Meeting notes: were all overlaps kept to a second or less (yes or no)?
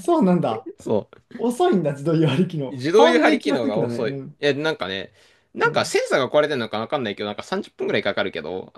no